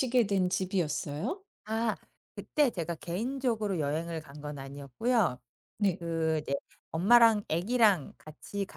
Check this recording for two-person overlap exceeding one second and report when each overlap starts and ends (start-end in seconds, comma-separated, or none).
none